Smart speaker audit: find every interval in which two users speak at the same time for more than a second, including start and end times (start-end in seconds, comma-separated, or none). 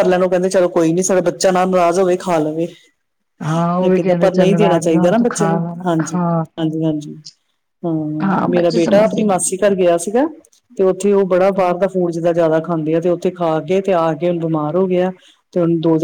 3.8-6.4, 8.2-9.7